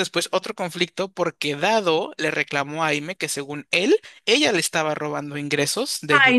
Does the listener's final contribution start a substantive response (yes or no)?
yes